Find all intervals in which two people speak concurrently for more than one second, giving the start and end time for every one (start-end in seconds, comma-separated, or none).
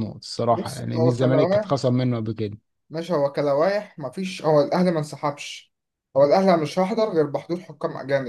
0.5-1.8